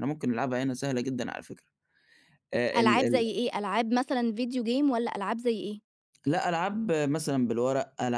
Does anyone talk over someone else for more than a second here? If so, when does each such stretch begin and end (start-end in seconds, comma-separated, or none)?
none